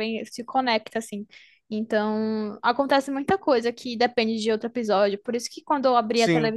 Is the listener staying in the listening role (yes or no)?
yes